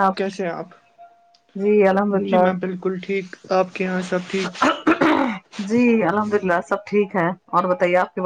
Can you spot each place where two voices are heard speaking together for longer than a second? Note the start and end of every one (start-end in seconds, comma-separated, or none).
none